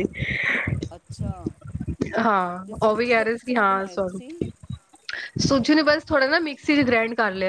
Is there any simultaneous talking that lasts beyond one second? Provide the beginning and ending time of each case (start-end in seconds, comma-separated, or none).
2.6-4.3